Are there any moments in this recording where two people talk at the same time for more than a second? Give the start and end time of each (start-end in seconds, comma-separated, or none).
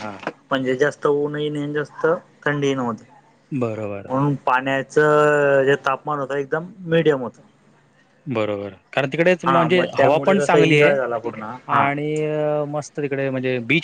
9.4-11.0